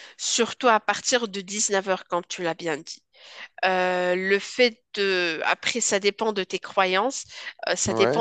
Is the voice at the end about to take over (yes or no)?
no